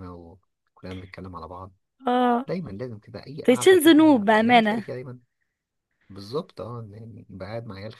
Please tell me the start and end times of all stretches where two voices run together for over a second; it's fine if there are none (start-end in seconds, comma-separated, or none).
3.4-4.8